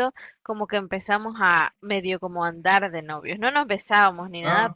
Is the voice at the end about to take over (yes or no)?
no